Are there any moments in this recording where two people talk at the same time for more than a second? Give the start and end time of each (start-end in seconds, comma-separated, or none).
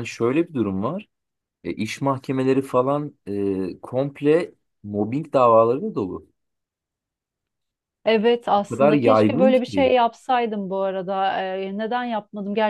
8.6-9.9